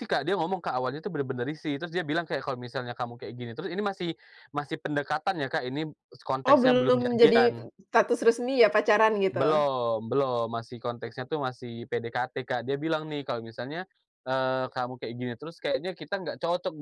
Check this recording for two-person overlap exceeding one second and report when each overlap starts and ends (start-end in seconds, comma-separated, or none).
6.5-7.7